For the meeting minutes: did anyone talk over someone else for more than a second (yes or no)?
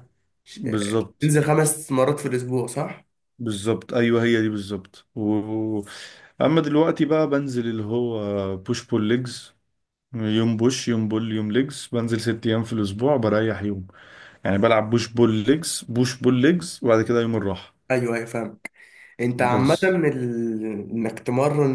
no